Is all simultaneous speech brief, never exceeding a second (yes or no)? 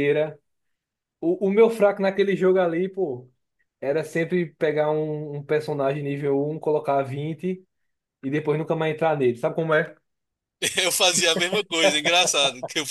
yes